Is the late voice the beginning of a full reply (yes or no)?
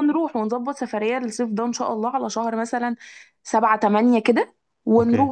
yes